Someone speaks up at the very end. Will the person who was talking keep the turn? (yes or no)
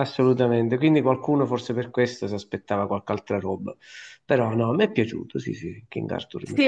no